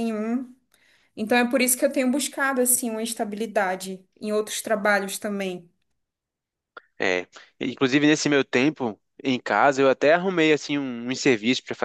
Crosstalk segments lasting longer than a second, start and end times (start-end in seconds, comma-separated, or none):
none